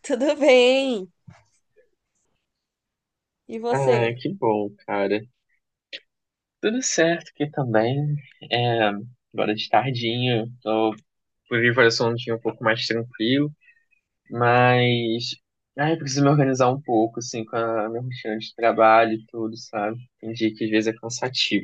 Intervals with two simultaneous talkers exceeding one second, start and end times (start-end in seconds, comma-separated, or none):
none